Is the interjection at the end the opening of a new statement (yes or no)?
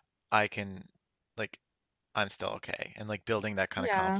no